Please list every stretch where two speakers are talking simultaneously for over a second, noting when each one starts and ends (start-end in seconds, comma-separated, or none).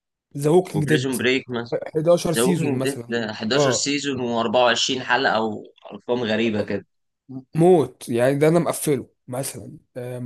2.4-3.9